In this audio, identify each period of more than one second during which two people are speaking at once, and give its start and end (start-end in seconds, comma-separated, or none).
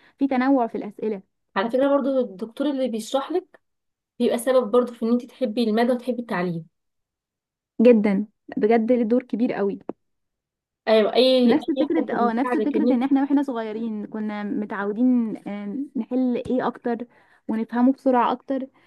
11.4-13.0